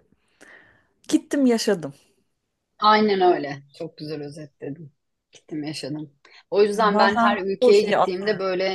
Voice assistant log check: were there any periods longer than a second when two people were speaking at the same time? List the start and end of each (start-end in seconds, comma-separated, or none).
6.7-8.1